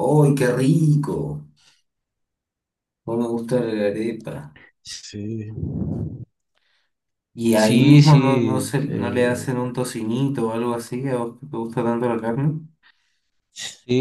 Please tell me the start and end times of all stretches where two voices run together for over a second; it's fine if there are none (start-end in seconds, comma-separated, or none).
7.5-9.5